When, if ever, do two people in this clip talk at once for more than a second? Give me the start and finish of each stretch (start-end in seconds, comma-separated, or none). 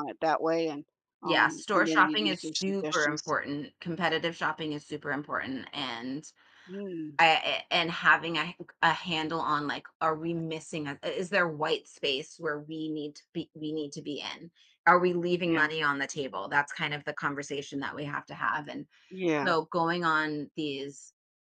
1.2-3.3